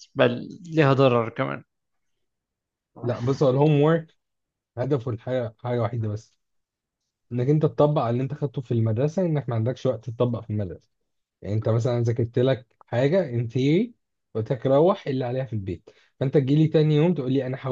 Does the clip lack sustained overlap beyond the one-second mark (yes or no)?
yes